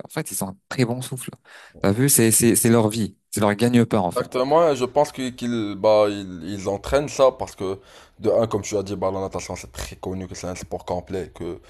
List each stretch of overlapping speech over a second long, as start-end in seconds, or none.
none